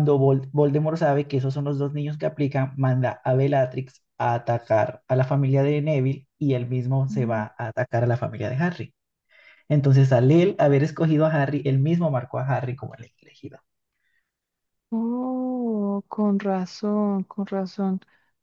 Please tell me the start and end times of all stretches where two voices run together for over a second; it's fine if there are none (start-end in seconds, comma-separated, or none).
none